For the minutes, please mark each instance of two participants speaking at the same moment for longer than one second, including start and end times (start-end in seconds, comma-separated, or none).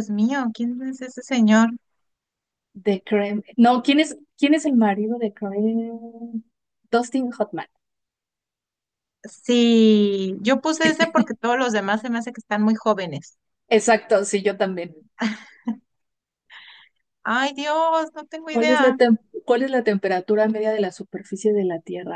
none